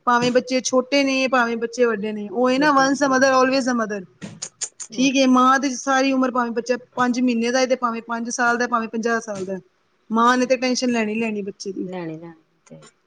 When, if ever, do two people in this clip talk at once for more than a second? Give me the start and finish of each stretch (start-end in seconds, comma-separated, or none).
none